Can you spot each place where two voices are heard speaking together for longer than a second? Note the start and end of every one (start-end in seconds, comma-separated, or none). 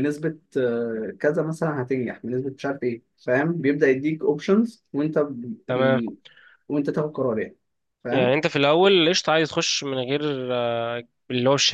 none